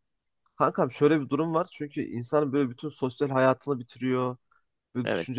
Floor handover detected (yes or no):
no